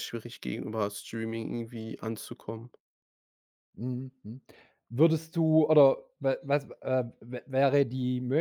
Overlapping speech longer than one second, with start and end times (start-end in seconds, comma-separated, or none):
none